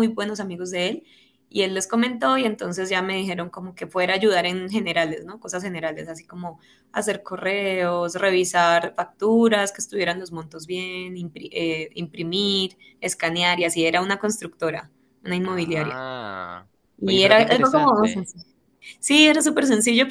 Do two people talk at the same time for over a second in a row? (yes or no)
yes